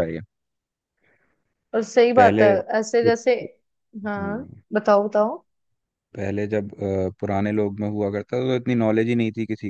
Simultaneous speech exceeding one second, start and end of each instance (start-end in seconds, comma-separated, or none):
none